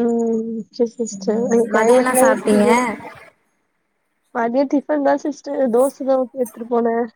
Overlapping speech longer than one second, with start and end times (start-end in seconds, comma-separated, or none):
1.2-2.7